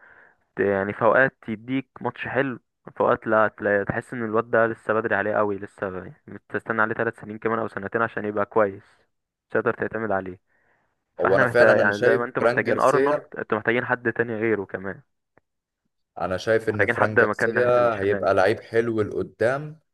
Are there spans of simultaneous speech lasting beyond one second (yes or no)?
yes